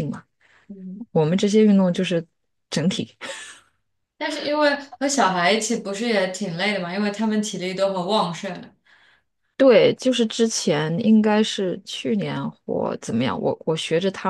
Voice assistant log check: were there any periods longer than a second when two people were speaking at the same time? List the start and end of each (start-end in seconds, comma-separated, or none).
none